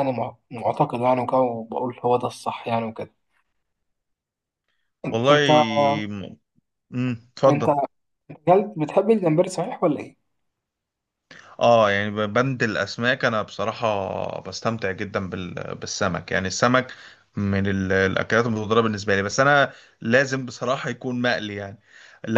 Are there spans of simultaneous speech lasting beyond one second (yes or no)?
no